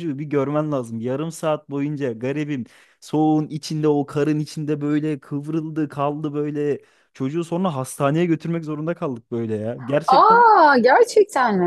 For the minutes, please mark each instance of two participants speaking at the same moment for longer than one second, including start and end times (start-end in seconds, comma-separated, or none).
none